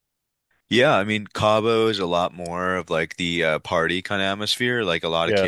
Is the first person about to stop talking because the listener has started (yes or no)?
no